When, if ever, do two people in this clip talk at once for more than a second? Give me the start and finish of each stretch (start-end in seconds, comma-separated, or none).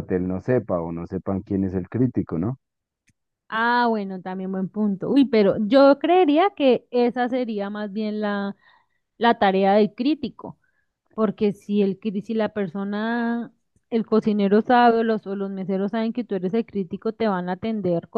none